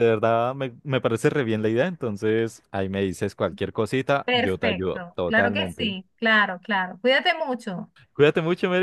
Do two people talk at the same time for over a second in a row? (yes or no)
yes